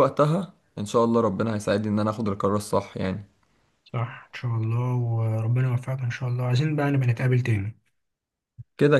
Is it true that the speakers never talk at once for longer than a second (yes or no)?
yes